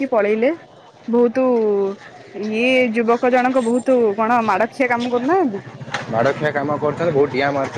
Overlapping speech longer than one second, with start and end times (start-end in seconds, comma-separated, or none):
none